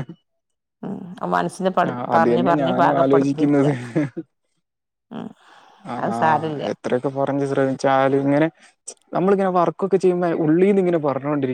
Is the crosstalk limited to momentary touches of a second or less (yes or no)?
no